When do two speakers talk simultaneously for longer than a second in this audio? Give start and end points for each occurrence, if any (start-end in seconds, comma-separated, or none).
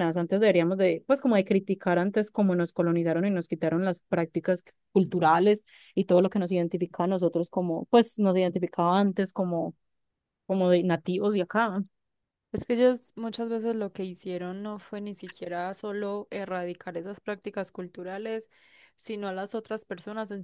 none